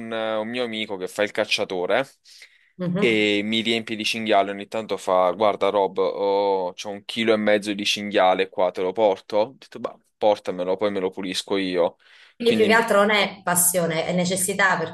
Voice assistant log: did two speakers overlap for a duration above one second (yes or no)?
no